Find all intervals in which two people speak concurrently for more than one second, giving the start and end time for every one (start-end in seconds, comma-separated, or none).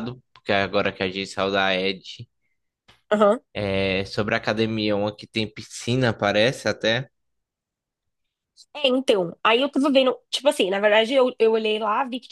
none